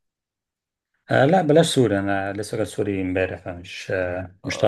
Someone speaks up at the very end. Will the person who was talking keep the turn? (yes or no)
no